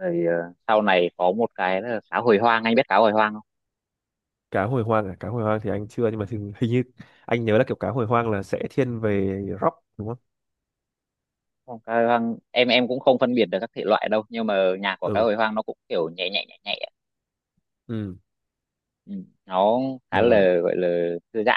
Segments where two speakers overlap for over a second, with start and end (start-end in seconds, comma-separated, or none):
none